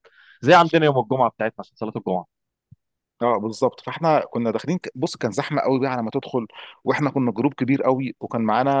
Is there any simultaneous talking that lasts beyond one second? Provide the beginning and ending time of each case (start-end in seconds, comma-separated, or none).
none